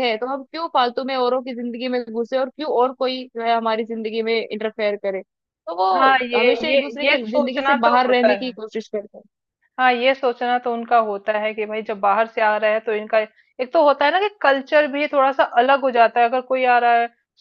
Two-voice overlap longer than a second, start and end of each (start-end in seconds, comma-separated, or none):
6.0-8.6